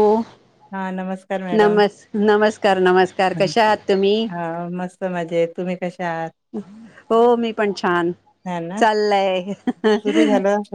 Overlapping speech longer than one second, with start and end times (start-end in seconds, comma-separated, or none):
none